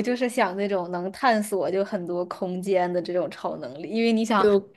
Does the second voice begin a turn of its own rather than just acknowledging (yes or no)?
no